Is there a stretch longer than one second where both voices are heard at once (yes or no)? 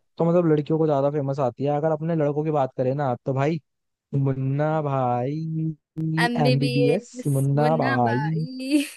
yes